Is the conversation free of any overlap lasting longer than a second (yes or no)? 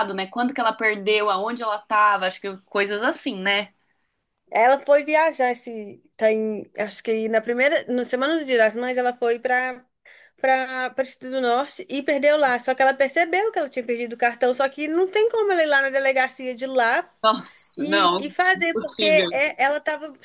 no